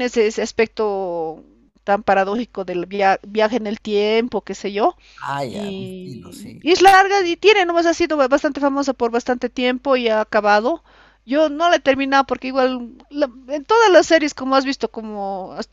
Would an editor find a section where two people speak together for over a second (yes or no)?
yes